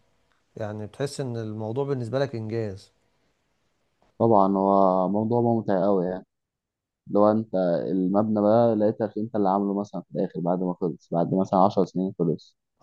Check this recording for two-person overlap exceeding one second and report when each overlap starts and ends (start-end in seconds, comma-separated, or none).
none